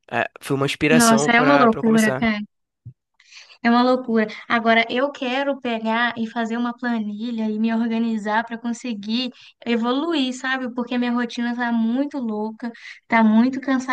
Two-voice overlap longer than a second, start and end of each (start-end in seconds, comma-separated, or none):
0.9-2.3